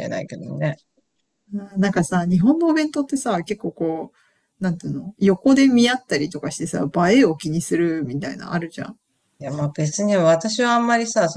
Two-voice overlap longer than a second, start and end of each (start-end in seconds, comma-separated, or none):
none